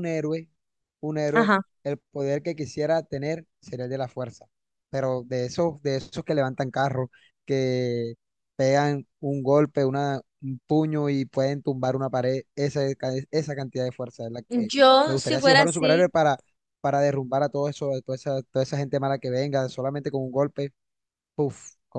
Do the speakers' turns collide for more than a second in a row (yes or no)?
yes